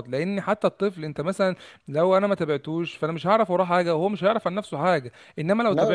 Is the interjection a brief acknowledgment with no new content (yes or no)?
yes